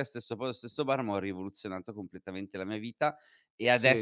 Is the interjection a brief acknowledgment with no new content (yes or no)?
yes